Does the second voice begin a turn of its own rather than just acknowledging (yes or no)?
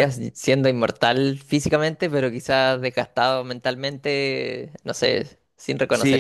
yes